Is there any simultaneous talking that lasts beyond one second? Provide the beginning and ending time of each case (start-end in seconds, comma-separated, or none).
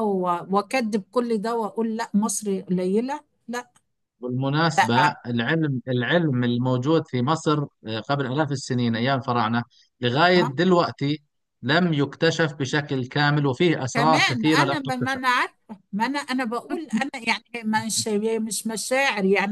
13.9-15.2